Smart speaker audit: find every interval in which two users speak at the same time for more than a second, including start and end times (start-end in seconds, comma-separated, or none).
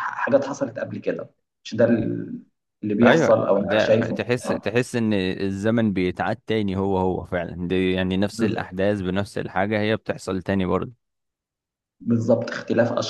3.0-4.6